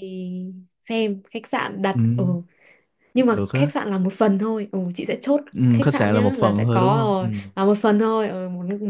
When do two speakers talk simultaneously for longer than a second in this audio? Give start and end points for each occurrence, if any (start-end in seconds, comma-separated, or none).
5.6-7.5